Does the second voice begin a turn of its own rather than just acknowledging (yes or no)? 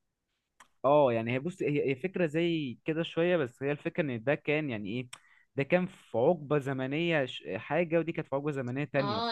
yes